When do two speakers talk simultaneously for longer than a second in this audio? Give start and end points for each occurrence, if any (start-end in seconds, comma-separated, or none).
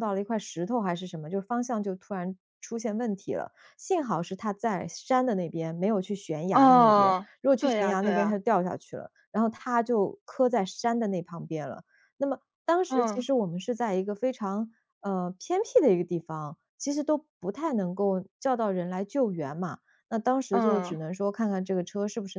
6.5-8.4